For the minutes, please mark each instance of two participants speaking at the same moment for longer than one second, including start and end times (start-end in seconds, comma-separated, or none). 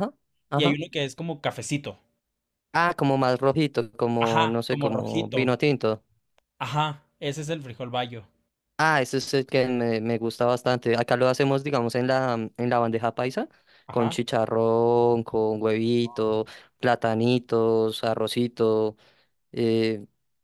4.2-5.6